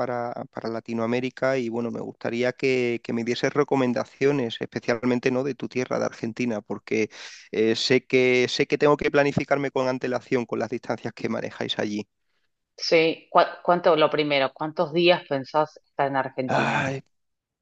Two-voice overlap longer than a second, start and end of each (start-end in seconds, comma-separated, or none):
none